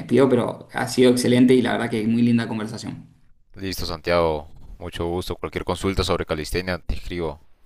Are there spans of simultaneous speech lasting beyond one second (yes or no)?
no